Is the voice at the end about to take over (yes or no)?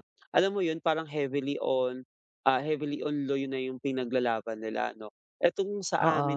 no